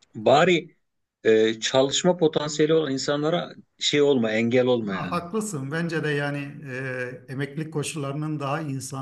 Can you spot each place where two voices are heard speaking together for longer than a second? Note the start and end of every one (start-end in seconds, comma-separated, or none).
none